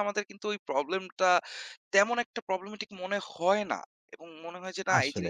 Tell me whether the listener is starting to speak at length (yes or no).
no